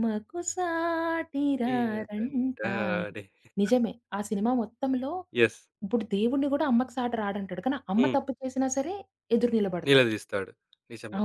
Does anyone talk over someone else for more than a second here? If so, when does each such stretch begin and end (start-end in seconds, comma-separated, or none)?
1.7-3.1